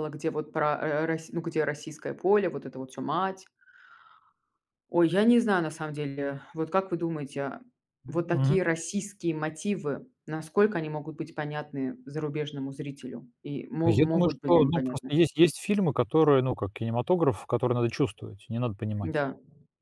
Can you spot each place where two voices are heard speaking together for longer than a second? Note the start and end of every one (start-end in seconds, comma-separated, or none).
13.8-15.1